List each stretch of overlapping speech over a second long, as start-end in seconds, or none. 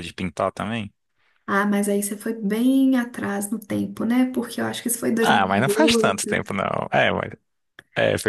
5.2-6.5